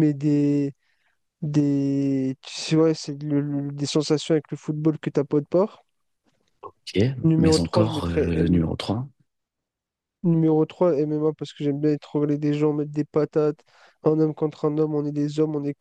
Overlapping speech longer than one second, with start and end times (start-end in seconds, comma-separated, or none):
7.4-8.6